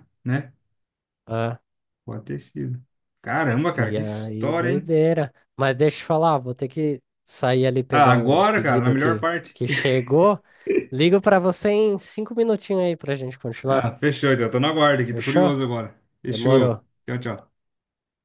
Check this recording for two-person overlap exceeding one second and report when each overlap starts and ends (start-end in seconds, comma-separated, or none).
3.7-4.9, 7.9-9.6